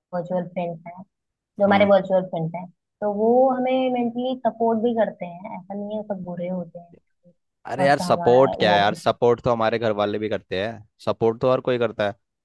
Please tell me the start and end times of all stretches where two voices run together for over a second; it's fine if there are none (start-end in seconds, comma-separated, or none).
7.8-9.1